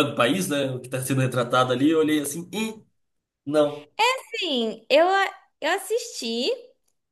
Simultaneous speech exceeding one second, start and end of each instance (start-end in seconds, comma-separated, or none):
none